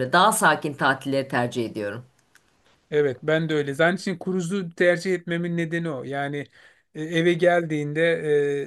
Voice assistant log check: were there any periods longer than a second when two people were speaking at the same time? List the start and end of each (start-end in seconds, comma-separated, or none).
none